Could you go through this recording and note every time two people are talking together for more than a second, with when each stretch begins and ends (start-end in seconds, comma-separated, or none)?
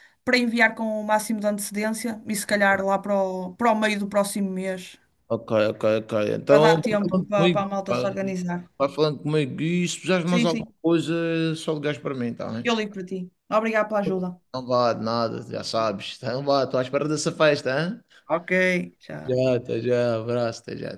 6.5-8.2